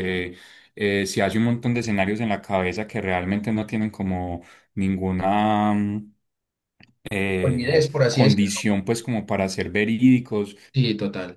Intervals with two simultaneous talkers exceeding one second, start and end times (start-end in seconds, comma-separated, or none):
7.4-8.6